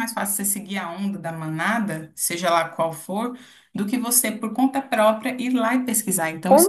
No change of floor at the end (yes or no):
no